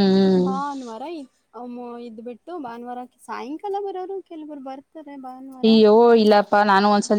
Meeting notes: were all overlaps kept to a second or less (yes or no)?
yes